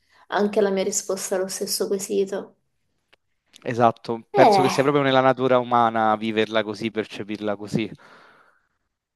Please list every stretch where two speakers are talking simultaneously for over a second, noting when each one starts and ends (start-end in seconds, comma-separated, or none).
none